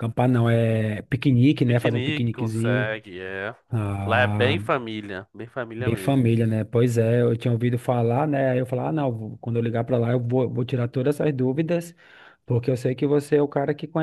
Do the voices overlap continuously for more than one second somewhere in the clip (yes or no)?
yes